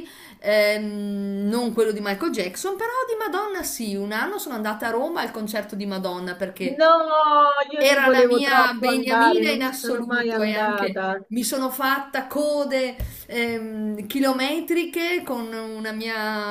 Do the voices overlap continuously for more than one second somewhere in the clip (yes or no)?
yes